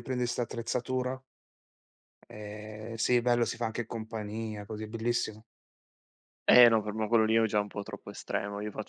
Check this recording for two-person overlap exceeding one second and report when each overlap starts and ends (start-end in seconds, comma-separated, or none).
none